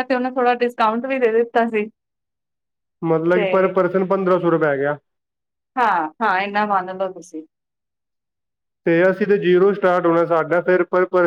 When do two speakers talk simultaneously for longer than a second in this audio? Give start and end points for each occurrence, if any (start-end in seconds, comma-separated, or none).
none